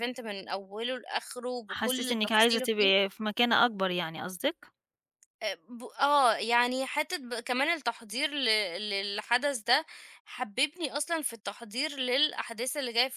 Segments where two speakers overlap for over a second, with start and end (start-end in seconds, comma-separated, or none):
1.7-3.1